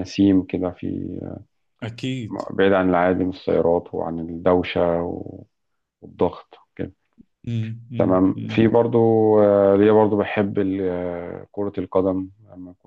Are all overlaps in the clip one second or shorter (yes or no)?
yes